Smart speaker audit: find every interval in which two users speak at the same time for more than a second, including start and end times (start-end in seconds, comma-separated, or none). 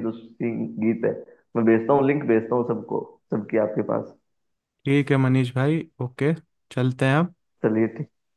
none